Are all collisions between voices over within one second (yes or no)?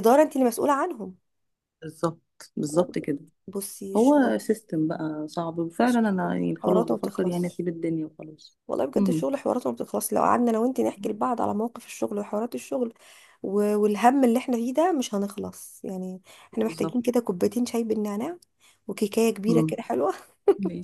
no